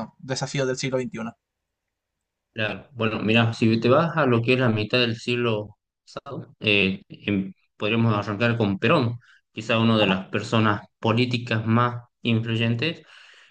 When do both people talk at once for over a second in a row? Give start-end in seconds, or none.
none